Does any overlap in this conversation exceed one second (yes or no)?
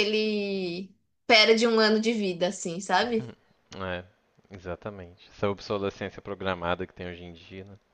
no